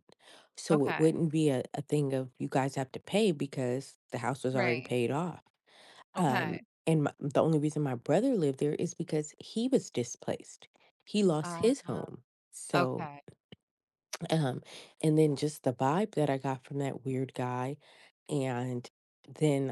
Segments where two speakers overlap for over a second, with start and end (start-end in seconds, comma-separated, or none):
none